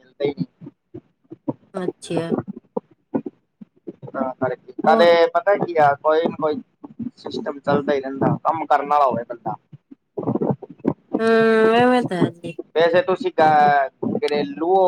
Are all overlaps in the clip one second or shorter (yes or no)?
yes